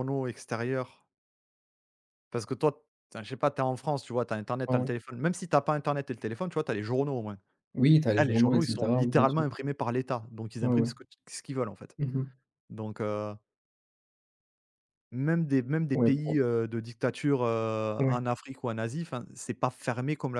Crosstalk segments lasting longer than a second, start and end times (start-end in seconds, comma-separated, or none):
8.2-9.5